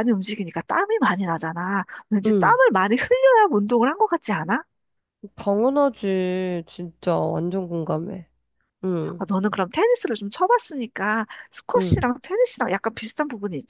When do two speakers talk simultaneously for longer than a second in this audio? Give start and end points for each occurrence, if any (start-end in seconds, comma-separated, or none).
none